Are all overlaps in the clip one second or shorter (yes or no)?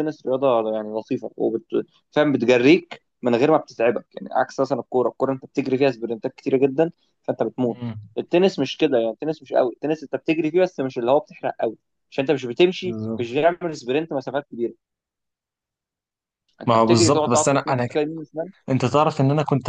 no